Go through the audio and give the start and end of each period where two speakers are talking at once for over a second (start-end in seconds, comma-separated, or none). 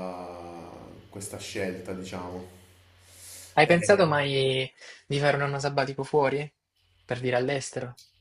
none